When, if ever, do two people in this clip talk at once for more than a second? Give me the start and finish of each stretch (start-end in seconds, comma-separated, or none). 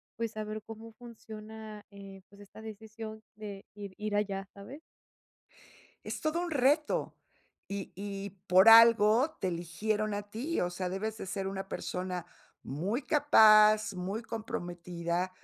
none